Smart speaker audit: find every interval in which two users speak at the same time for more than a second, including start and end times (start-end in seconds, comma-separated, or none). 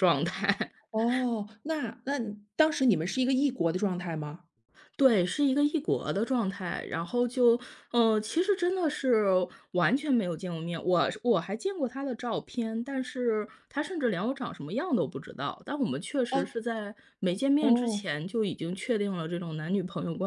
none